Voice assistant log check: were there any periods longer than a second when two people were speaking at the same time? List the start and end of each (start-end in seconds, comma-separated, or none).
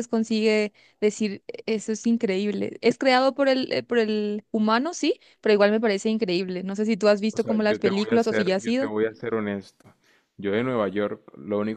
7.3-8.9